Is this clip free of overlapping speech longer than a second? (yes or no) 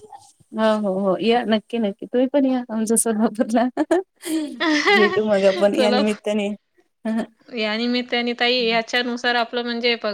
yes